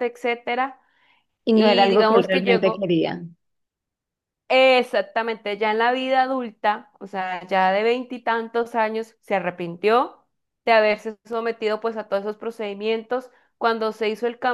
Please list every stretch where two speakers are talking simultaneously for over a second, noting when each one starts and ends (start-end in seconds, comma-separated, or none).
1.5-2.9